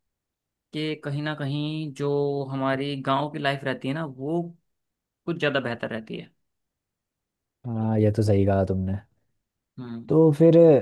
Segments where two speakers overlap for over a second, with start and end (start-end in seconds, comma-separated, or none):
none